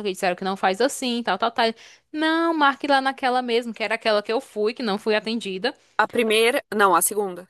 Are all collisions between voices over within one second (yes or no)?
yes